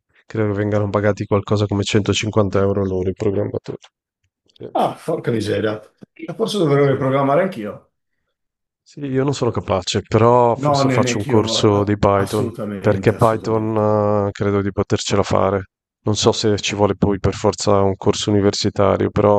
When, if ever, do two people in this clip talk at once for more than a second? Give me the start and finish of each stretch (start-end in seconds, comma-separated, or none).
10.6-13.8